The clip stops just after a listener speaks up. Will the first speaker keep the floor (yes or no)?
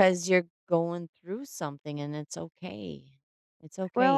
no